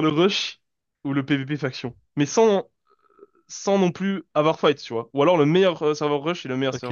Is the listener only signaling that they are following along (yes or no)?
no